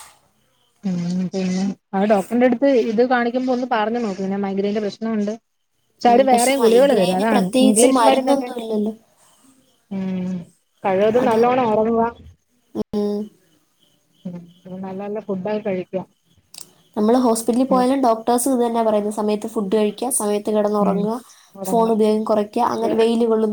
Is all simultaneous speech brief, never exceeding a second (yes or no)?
no